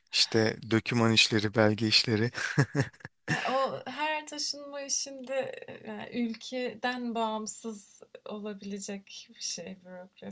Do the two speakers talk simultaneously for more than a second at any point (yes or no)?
no